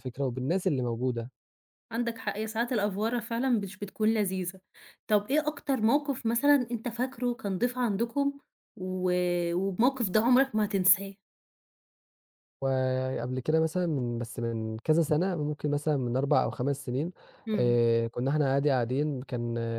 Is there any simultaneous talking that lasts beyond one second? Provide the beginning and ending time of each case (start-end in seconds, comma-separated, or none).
none